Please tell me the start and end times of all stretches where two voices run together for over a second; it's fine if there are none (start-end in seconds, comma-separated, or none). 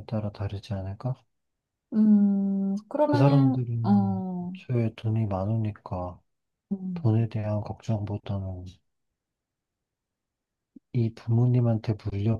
3.0-4.5